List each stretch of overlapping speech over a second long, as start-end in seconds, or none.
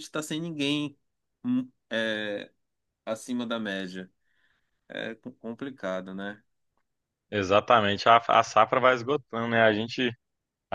none